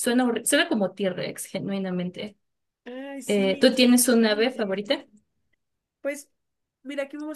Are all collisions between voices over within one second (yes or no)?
no